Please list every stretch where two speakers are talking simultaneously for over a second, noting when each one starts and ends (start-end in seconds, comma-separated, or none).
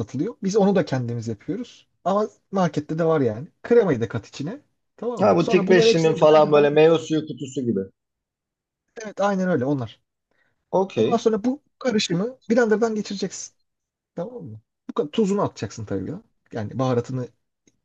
5.2-6.9